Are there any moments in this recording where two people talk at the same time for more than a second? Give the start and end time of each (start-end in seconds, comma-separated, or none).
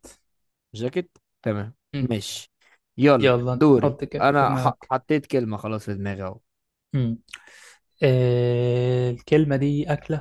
3.2-4.9